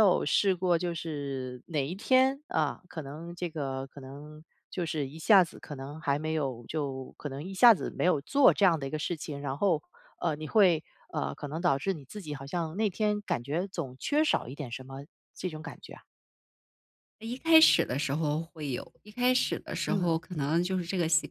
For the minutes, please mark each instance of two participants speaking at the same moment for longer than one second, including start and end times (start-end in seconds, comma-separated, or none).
none